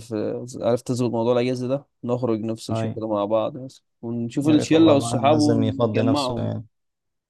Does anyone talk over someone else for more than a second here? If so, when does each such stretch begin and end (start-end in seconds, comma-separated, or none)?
4.4-6.5